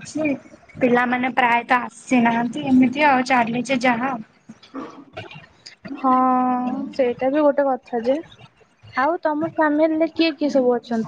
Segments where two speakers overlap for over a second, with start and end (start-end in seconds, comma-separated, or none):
none